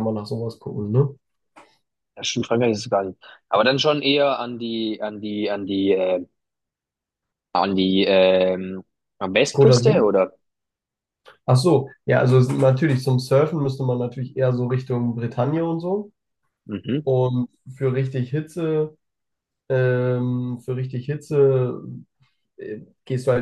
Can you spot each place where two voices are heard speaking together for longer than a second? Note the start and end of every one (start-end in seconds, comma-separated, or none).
none